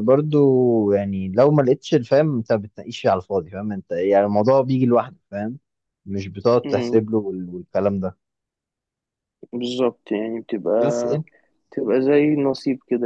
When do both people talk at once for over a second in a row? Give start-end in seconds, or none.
none